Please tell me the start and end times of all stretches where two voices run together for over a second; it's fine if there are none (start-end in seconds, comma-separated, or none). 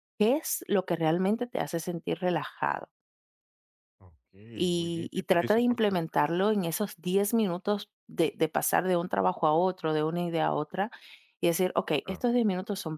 4.7-6.4